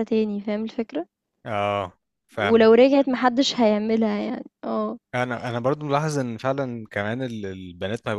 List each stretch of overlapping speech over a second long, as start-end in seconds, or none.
none